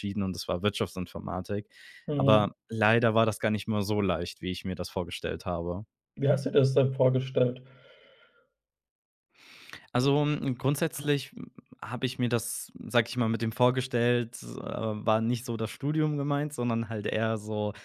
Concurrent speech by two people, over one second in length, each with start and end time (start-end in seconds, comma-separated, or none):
none